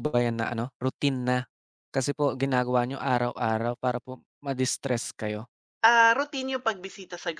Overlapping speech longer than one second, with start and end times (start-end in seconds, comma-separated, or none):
none